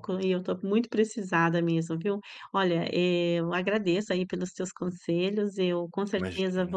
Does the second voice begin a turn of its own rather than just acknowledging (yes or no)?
no